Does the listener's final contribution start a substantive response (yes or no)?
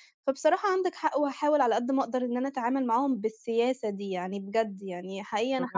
no